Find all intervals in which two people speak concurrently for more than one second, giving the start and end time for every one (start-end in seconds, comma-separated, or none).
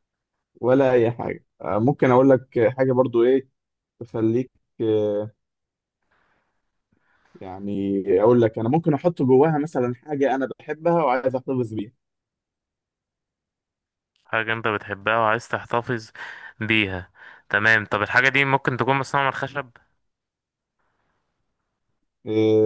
none